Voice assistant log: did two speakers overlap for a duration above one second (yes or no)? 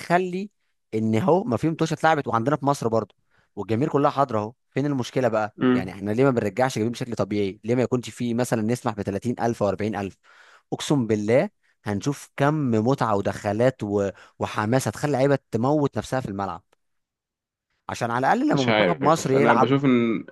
yes